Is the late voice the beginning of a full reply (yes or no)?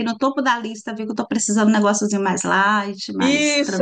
yes